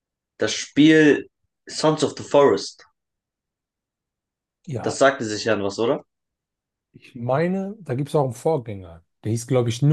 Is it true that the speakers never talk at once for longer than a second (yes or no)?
yes